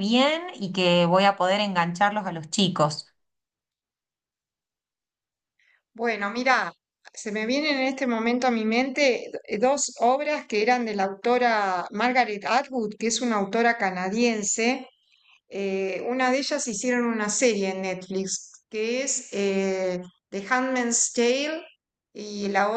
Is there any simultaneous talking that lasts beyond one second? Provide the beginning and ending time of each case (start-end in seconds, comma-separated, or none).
none